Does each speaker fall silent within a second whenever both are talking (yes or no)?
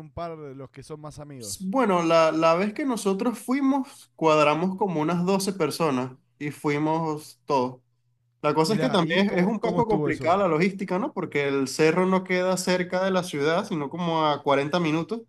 no